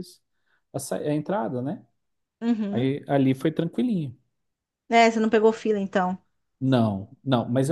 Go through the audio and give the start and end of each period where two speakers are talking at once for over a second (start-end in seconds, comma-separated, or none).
none